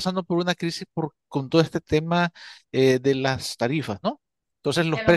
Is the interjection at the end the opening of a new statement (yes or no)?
no